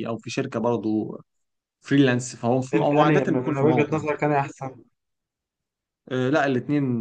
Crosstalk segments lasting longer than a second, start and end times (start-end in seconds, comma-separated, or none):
2.7-4.0